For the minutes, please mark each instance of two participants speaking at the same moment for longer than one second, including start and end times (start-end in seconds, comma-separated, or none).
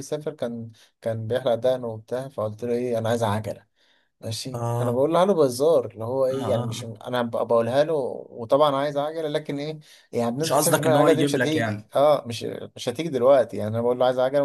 10.4-11.9